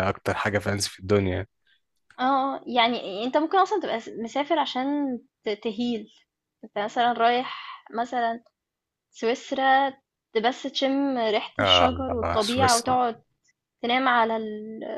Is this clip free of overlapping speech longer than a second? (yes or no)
no